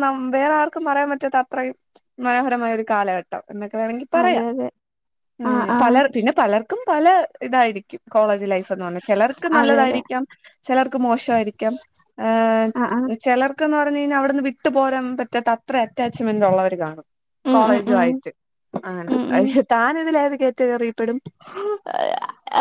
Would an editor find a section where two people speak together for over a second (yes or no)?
no